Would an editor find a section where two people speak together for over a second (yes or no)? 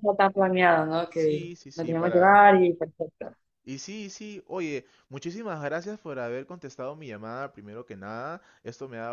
yes